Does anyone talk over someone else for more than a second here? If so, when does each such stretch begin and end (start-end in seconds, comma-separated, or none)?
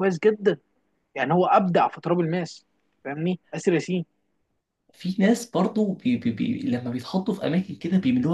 none